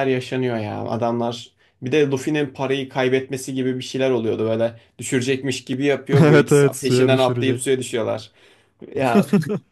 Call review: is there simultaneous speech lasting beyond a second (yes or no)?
yes